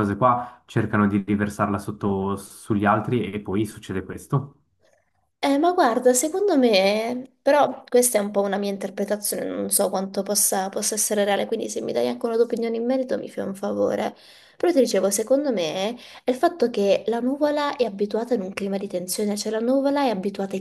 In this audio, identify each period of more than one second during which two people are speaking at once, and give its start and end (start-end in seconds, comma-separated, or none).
none